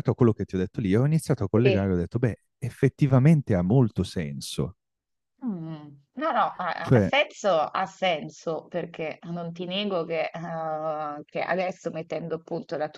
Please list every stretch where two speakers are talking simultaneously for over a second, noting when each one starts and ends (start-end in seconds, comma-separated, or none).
none